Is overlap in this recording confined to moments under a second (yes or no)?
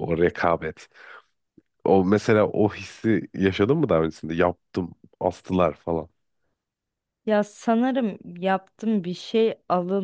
yes